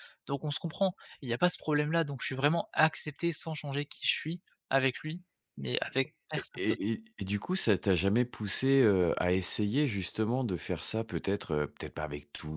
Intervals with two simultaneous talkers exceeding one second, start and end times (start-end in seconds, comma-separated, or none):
none